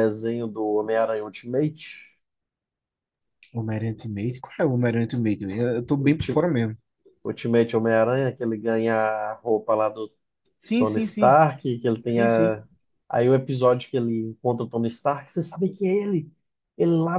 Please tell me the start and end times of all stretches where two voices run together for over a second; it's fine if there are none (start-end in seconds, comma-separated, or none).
none